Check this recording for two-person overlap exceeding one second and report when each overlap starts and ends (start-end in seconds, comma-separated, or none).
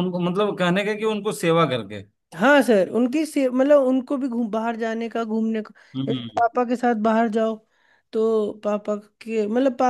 none